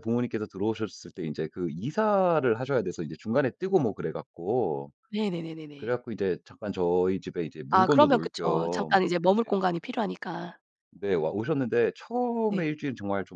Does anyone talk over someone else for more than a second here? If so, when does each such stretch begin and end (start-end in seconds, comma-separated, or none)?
7.7-9.5